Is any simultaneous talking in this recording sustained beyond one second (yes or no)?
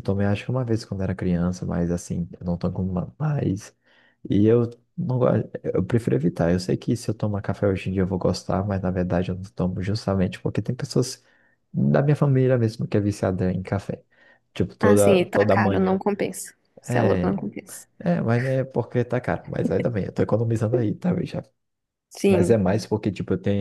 yes